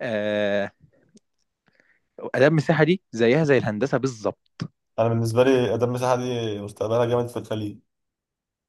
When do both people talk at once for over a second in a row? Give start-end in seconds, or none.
none